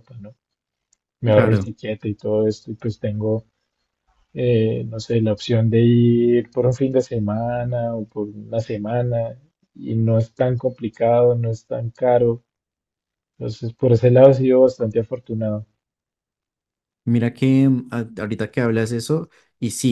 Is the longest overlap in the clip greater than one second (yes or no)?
no